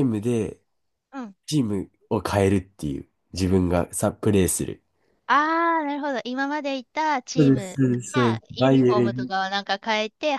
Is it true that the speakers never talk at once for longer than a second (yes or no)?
no